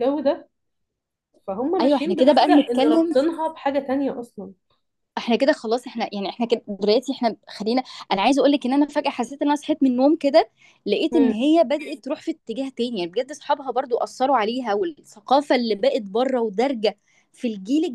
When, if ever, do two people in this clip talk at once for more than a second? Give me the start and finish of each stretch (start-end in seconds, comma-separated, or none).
1.8-3.1